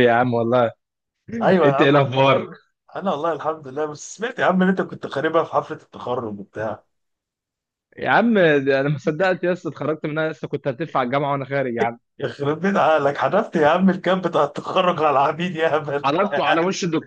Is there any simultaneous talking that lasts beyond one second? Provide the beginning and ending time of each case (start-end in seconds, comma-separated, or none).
none